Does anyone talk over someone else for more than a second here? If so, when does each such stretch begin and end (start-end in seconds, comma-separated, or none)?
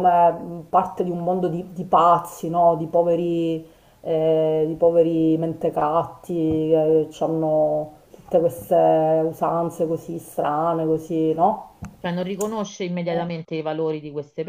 none